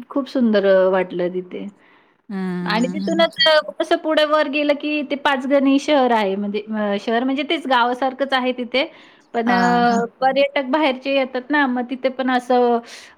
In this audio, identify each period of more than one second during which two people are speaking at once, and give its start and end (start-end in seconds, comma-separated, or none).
none